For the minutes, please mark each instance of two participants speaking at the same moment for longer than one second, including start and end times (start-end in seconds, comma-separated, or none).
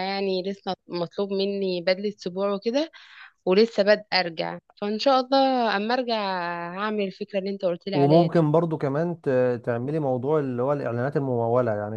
none